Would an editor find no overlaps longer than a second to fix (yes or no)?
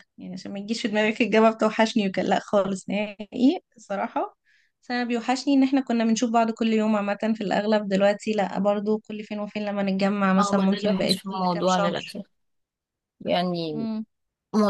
no